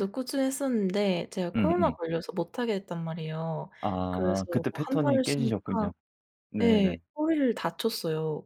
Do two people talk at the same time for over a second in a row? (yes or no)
yes